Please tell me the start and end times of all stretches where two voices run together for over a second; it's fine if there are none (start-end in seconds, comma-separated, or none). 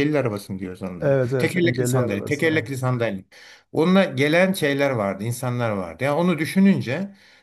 1.0-2.7